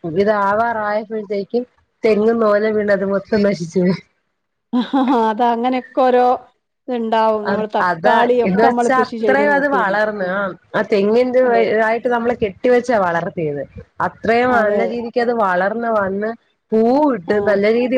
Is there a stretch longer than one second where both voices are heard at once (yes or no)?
yes